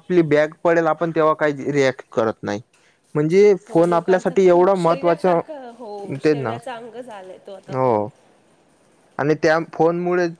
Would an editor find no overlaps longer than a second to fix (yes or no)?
no